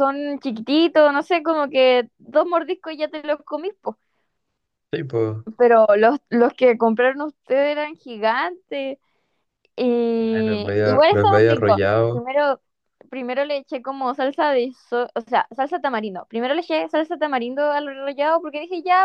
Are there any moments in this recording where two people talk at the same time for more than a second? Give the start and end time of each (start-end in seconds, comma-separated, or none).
10.3-12.2